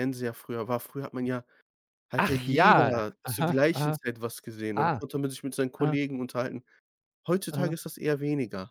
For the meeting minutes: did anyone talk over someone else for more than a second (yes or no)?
yes